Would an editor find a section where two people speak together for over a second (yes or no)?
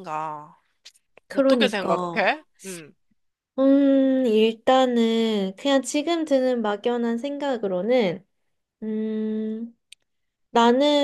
no